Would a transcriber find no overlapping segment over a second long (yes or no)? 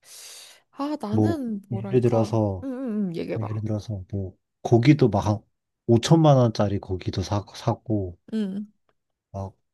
no